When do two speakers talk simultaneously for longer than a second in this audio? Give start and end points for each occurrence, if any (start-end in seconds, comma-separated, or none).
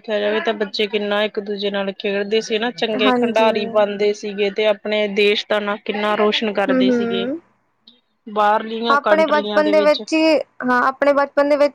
none